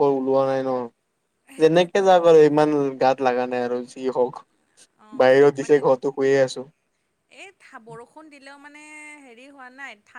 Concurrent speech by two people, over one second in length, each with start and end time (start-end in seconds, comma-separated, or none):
none